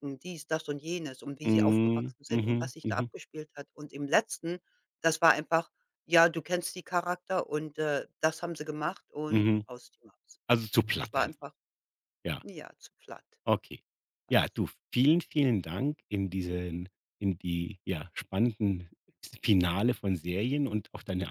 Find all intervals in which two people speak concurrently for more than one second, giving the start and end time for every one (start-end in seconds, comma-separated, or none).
1.4-3.1